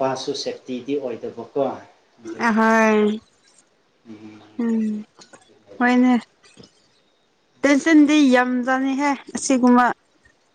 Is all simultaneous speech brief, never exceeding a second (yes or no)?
yes